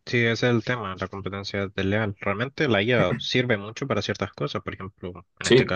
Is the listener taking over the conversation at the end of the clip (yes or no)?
no